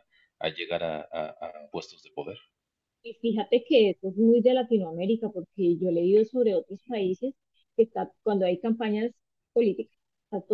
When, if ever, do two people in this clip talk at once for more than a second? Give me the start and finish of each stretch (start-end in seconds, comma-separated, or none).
none